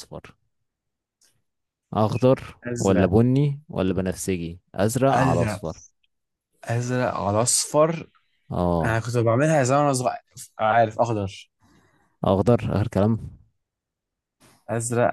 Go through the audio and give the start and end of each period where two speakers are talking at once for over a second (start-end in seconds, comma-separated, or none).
none